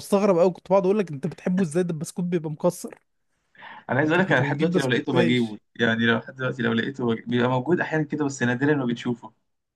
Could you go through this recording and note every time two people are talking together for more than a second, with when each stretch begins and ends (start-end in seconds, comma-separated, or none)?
4.0-5.6